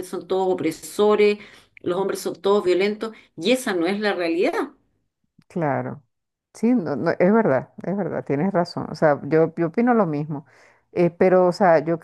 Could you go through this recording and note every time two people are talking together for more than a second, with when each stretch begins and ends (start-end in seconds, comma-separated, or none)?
none